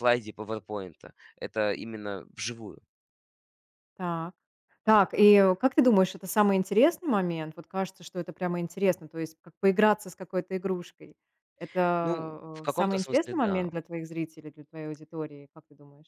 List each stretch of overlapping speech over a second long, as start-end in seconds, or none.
12.0-13.7